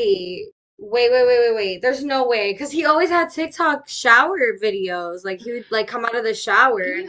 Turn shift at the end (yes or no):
yes